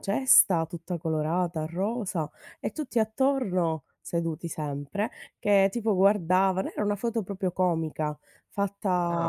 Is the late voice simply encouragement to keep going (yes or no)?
no